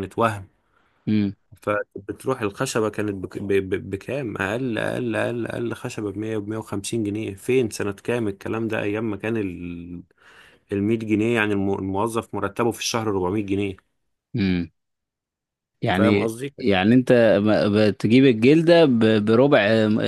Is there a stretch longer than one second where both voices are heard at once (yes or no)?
no